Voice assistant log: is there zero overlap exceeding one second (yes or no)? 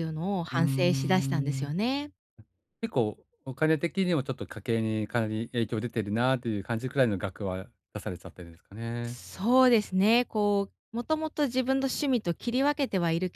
no